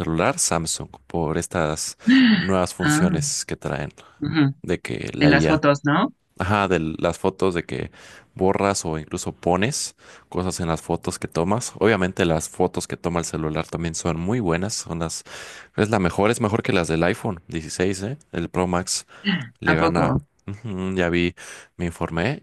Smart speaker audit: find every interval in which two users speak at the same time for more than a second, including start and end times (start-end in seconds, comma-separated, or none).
none